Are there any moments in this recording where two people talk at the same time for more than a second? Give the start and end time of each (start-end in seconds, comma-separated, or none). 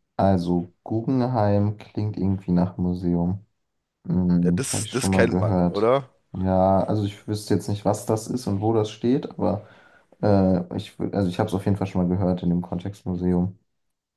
4.4-5.9